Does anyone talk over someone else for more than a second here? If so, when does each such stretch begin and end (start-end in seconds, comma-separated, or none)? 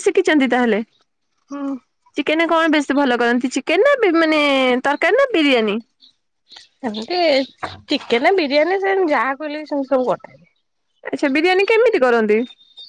none